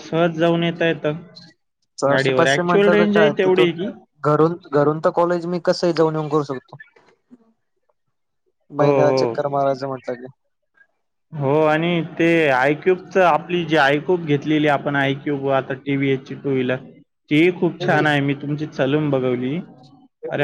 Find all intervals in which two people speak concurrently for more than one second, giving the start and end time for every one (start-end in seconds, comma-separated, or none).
2.1-3.7